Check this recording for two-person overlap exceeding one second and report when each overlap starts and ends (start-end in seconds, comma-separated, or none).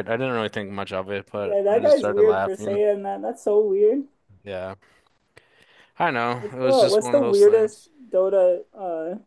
1.4-2.8, 6.4-7.9